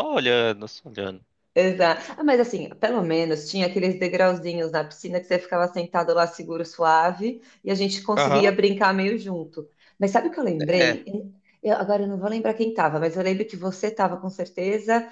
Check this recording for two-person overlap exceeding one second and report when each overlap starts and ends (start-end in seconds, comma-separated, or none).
none